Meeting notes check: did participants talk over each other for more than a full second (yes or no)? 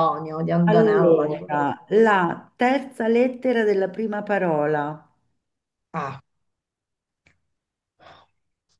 yes